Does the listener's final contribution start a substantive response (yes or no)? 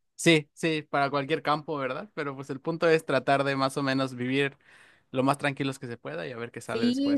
yes